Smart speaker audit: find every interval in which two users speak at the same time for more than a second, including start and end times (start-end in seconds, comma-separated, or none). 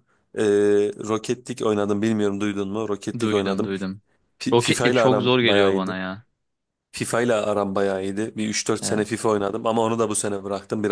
4.5-6.0